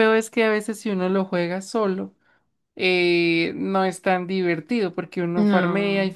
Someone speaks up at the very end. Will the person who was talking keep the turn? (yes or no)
yes